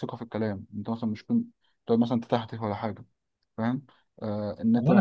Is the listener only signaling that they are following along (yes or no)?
no